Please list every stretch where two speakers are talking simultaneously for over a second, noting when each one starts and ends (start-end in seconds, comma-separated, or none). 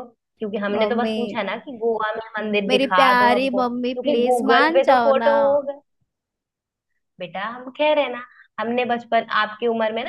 2.7-5.3